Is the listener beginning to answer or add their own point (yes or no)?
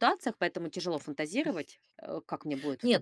yes